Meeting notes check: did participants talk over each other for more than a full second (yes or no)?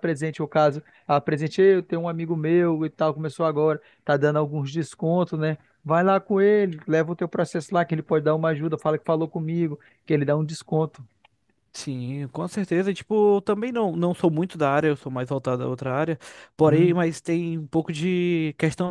no